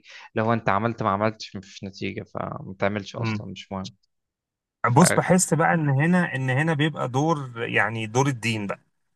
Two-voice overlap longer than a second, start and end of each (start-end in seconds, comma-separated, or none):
none